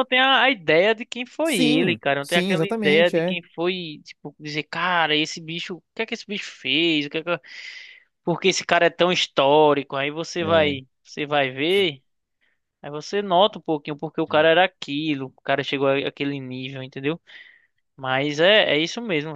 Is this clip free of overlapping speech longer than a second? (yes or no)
no